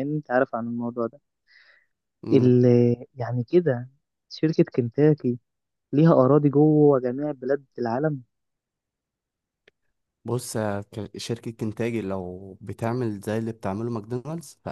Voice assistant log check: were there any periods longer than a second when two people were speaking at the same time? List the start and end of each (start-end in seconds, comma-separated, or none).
none